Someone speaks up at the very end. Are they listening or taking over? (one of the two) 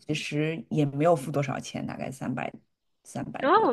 taking over